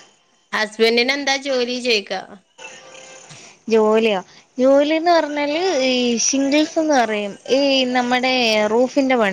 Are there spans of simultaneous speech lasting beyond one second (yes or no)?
no